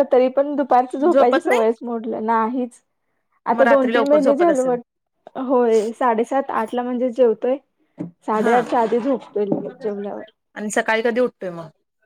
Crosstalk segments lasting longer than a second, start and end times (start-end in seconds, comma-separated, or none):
3.5-4.7